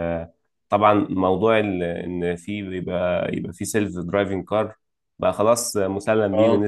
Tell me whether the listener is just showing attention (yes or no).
yes